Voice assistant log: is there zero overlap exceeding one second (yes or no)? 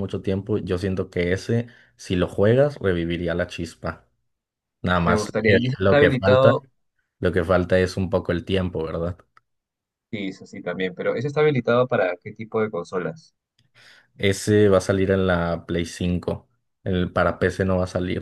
no